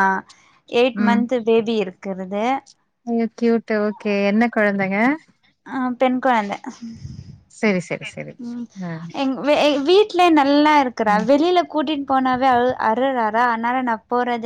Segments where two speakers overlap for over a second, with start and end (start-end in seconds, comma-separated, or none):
none